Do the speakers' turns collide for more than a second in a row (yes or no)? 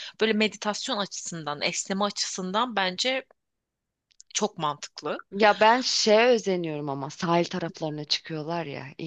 no